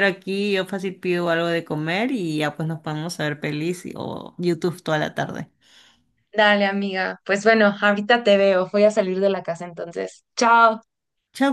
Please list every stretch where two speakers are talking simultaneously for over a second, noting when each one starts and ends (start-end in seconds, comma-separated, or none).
none